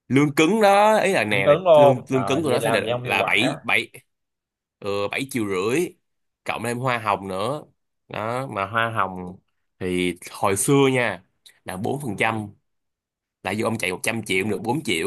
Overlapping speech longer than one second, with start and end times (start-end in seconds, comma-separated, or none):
1.3-3.6